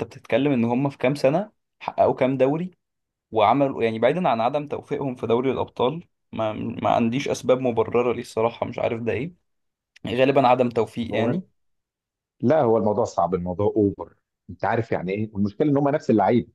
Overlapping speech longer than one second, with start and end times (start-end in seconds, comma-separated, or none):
none